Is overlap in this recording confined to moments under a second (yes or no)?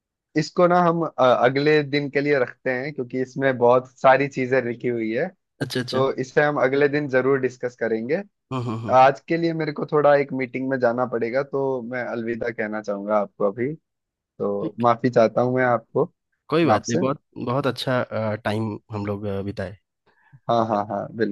yes